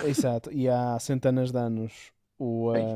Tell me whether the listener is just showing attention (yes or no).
yes